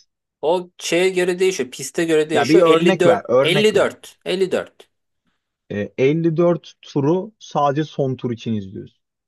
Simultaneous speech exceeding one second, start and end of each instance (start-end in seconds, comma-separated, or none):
2.3-3.9